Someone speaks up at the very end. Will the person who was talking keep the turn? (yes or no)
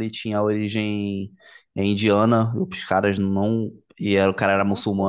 yes